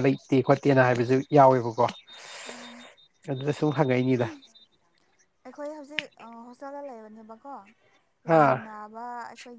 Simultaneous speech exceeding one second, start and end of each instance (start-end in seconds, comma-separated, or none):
none